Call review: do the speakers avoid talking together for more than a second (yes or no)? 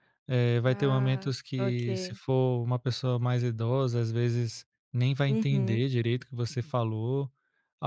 no